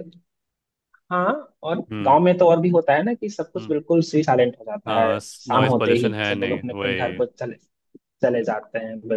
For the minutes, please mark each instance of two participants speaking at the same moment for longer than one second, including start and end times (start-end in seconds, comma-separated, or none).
4.9-7.2